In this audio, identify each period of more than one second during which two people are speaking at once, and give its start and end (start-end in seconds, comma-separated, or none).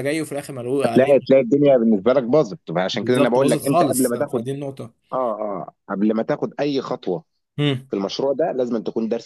2.9-4.4